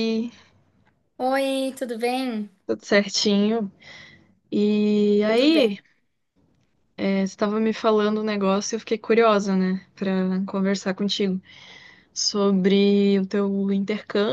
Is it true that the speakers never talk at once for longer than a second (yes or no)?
yes